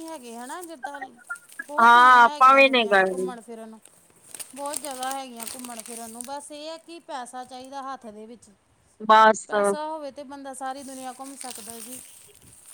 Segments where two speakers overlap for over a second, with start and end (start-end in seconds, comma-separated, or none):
1.8-3.3